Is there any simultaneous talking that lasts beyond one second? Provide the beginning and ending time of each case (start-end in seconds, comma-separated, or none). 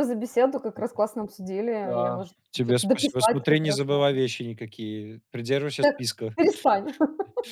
1.8-4.0